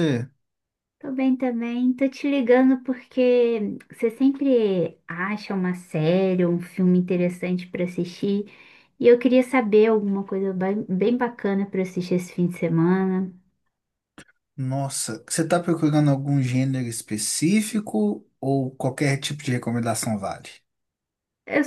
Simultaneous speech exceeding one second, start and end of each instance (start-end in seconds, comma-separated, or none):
none